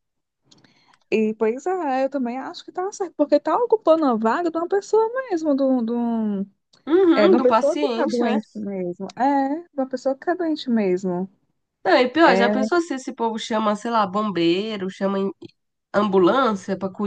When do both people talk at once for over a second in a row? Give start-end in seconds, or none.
7.2-8.4